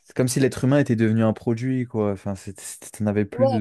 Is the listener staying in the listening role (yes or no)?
yes